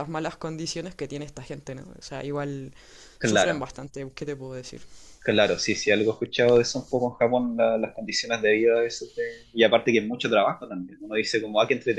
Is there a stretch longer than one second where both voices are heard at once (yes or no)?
no